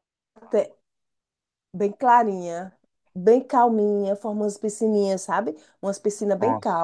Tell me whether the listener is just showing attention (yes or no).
yes